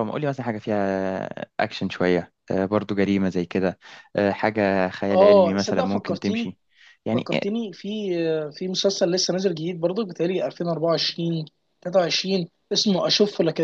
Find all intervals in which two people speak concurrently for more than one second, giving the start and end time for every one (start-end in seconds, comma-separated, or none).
5.1-6.5